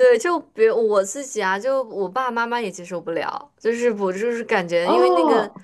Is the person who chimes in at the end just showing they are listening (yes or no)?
yes